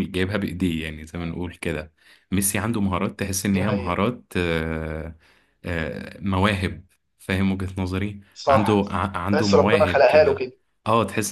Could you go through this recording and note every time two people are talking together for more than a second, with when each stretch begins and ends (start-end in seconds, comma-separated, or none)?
8.3-10.5